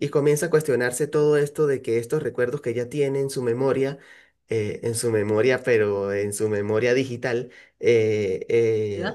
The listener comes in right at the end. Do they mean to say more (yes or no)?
no